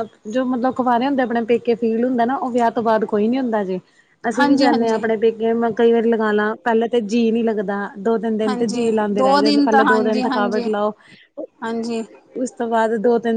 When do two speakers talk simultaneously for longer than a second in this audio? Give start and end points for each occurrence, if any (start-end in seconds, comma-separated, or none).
8.5-10.6